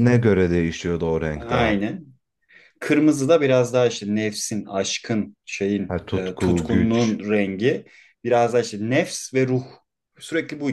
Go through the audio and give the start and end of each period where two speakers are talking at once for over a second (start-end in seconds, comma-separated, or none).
5.9-7.2